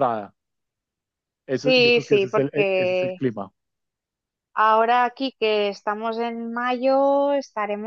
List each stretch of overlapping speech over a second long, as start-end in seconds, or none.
1.5-3.2